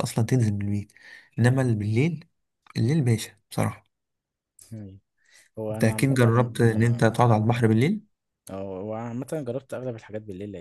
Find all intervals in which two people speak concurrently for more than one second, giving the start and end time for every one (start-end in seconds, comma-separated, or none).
5.7-7.2